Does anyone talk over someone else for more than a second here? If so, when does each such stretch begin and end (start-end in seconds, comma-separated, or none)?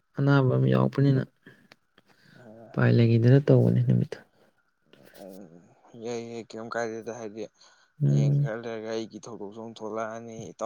none